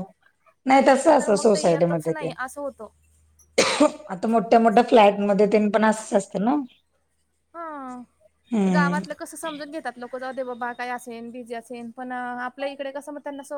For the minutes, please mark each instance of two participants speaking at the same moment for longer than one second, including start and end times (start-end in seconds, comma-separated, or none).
0.9-2.3